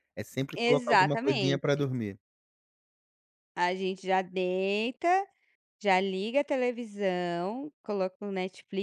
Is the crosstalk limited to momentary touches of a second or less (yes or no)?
no